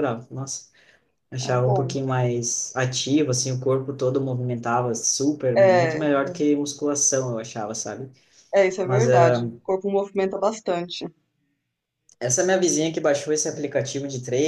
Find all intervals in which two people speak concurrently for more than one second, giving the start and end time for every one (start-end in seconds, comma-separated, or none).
none